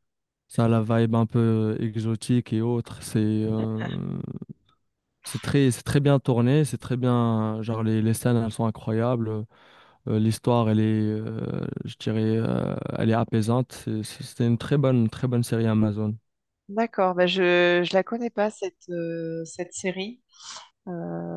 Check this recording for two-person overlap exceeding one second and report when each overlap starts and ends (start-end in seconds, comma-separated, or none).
none